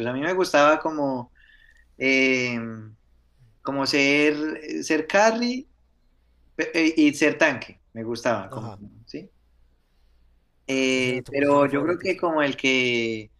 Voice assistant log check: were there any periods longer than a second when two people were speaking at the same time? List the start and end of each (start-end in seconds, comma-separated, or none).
10.9-12.2